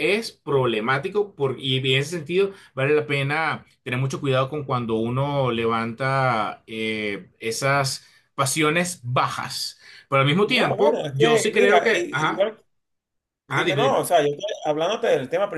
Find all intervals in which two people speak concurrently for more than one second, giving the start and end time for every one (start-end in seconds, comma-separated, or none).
10.5-12.5